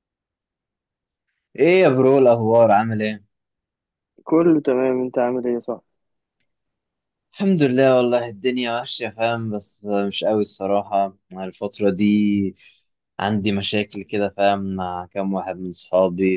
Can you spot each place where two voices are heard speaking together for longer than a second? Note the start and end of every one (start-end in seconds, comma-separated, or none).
none